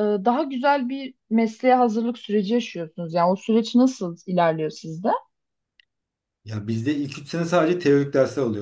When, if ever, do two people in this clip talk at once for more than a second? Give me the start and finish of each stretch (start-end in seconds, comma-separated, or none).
none